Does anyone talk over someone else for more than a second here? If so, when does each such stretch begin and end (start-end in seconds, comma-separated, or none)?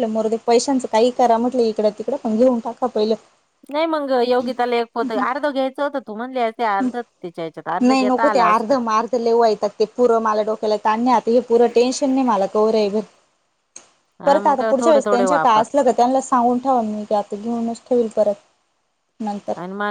14.2-15.6